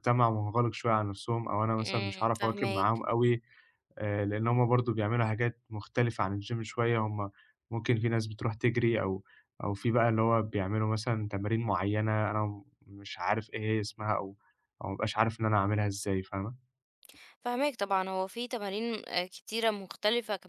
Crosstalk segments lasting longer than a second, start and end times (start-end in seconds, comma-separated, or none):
1.8-3.0